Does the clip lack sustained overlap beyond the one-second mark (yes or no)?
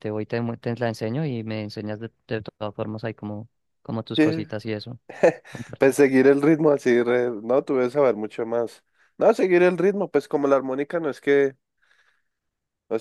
yes